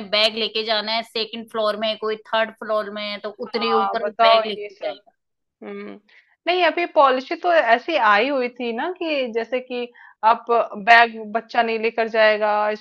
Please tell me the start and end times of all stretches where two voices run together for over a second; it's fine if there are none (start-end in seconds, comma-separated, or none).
3.5-5.0